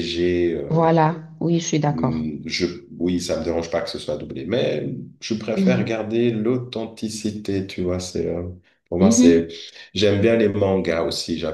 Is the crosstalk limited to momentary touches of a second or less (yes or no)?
yes